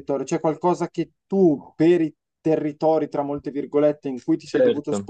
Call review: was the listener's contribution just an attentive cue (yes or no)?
yes